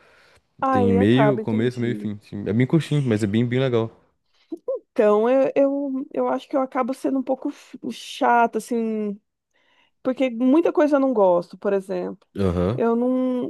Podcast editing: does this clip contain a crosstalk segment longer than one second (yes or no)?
yes